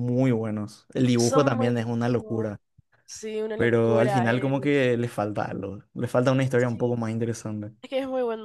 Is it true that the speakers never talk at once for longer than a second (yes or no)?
no